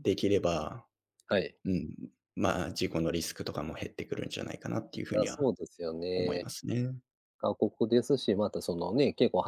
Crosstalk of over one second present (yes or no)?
no